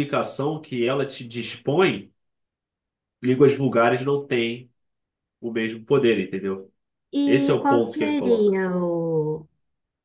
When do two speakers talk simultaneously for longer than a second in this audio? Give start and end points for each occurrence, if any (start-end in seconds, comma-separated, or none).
7.2-8.6